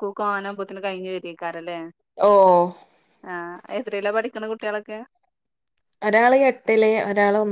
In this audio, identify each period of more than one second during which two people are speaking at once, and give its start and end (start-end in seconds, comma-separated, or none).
none